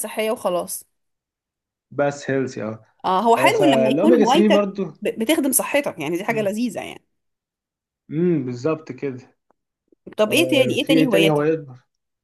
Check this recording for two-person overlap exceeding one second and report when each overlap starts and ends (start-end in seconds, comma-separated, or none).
3.4-4.8, 10.3-11.5